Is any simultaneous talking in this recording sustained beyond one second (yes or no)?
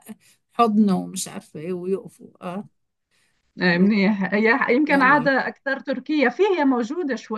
no